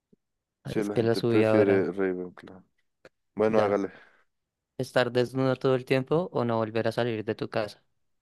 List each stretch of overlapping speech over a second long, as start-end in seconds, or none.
0.6-1.9